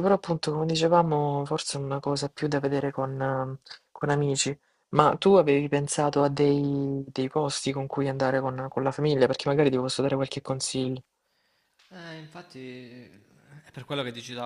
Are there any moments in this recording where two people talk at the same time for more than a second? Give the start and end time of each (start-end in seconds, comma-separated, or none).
none